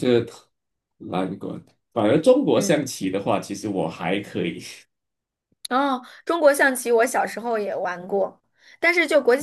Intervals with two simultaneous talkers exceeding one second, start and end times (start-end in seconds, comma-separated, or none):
none